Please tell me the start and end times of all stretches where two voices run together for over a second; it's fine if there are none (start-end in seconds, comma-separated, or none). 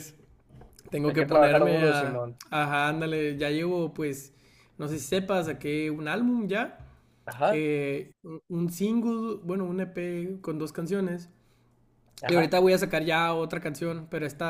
1.1-2.4